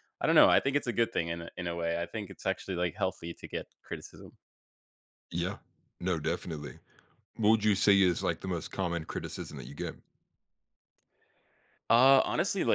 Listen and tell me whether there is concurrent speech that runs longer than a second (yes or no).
no